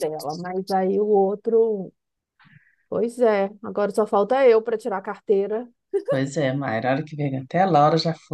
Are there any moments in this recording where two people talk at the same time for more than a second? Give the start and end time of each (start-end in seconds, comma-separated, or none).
none